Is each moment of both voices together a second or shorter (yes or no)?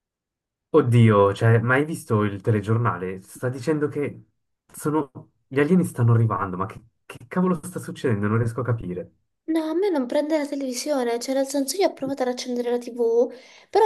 yes